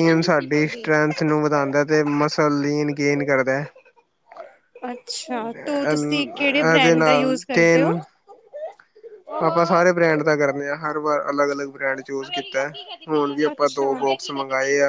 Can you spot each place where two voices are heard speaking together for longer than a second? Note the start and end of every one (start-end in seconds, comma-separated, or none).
5.6-7.9